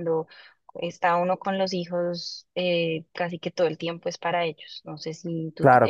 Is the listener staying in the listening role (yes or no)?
yes